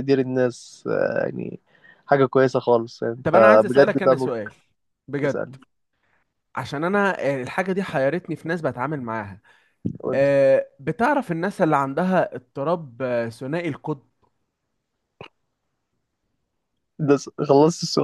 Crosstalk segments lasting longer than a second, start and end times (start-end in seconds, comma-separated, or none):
3.2-4.5